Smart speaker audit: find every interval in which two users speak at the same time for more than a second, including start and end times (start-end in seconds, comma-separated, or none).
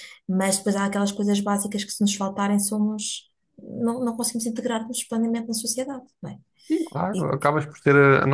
none